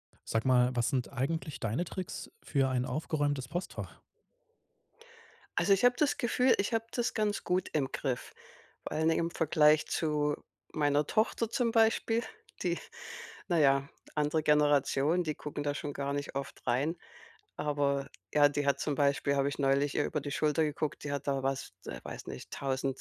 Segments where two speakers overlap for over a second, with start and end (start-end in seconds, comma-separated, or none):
none